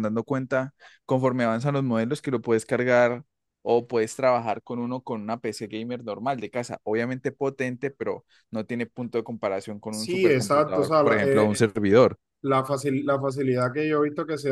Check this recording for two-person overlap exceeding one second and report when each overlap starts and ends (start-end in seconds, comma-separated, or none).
9.9-11.6